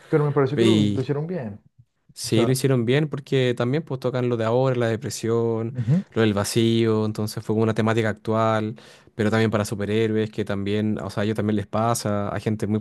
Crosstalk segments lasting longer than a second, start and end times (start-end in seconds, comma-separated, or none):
none